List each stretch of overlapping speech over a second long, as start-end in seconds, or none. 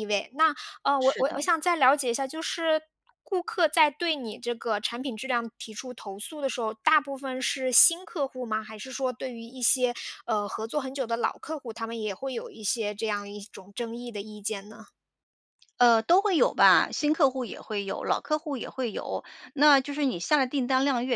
none